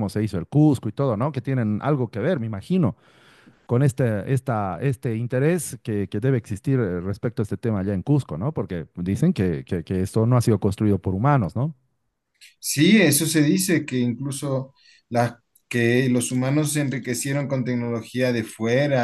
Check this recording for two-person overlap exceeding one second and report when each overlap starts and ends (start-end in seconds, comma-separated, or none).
none